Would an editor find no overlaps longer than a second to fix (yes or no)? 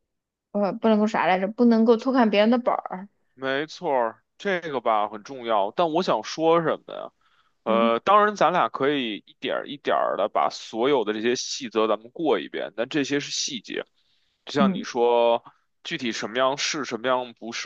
yes